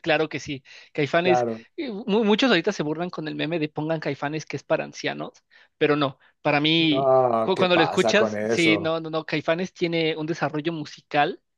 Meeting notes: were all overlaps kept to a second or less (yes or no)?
no